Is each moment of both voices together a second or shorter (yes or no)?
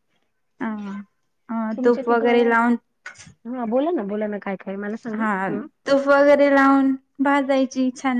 yes